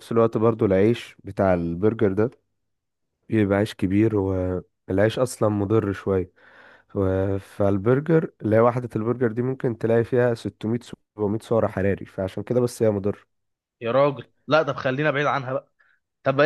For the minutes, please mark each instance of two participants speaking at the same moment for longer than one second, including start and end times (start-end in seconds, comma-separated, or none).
none